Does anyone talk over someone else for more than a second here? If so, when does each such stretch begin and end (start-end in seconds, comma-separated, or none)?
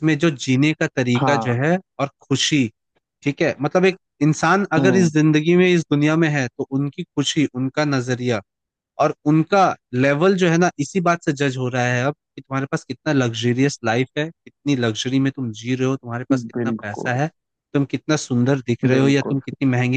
none